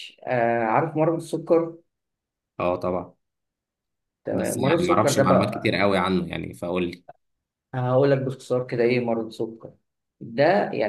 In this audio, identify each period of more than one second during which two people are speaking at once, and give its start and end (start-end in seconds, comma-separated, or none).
4.3-5.8